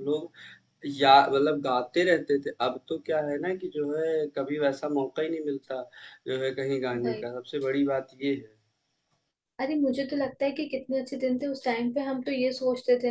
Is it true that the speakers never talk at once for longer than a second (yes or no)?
yes